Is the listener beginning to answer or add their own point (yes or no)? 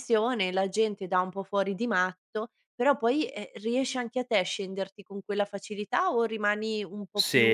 yes